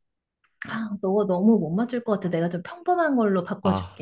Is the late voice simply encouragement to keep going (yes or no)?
no